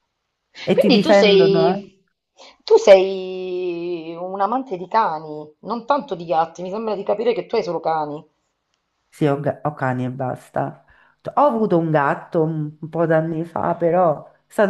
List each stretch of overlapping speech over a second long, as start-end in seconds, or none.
0.7-2.0